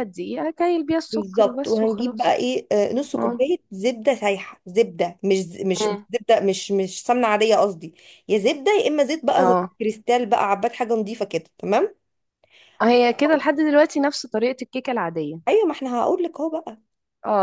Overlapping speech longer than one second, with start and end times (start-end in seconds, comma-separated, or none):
1.1-2.4